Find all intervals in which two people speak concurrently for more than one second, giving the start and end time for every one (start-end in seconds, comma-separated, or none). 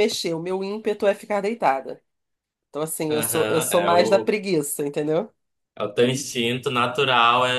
3.1-4.3